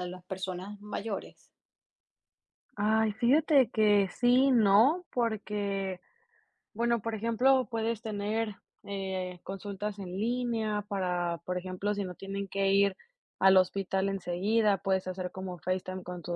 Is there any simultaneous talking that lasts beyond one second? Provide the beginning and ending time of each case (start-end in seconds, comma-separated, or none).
none